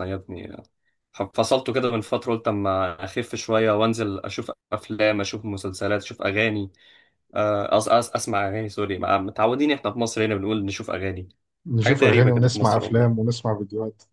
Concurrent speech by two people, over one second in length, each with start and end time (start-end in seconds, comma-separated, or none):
11.8-13.3